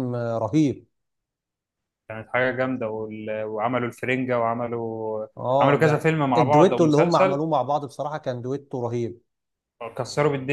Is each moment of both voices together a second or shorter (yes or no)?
no